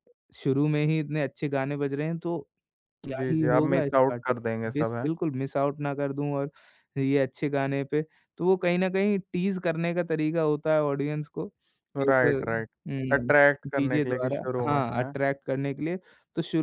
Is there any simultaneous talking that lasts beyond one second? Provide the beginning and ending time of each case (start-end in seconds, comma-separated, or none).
3.2-5.1, 13.1-15.1